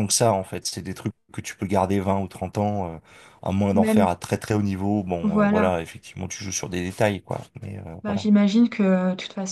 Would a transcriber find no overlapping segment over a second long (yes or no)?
yes